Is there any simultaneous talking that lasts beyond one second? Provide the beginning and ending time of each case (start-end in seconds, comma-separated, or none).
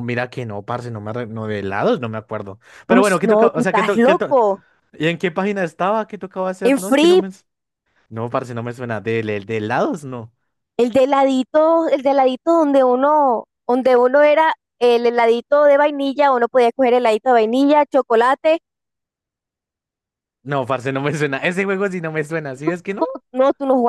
2.9-4.4